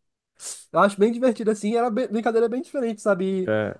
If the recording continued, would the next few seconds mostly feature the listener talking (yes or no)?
no